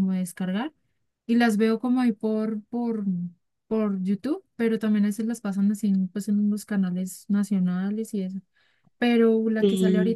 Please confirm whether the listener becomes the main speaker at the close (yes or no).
no